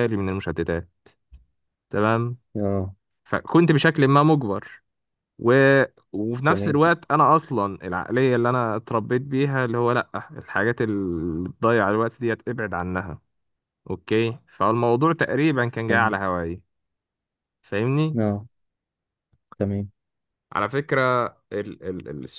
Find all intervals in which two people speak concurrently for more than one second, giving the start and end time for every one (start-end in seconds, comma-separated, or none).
none